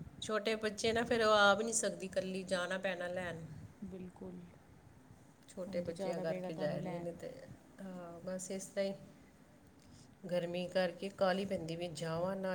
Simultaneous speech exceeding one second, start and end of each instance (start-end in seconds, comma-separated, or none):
5.7-7.1